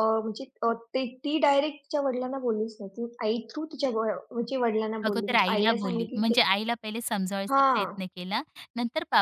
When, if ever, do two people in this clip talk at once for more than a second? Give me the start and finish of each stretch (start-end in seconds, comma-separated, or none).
5.1-6.4